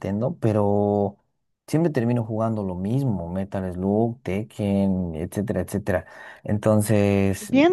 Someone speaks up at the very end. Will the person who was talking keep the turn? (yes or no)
no